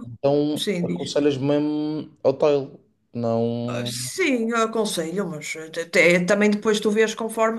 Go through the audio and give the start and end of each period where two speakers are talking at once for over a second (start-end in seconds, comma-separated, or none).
none